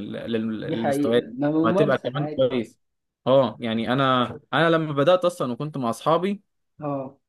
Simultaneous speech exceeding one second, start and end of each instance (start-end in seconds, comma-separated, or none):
0.6-2.5